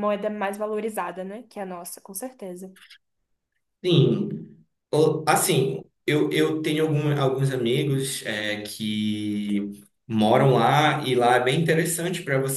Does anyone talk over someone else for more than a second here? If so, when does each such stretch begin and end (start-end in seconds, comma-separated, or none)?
none